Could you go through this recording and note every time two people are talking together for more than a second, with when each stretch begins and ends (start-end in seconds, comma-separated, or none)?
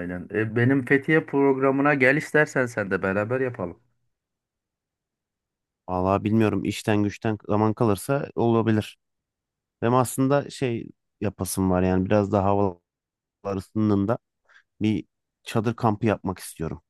none